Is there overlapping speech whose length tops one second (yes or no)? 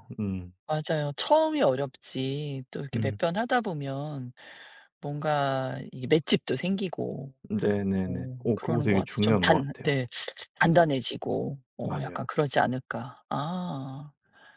yes